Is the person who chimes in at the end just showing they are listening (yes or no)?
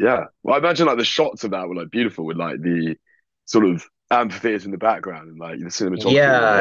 no